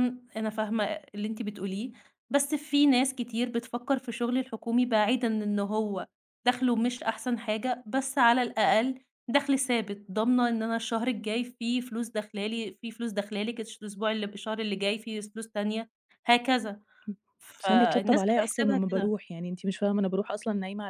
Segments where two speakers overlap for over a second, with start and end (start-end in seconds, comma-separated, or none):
17.6-19.1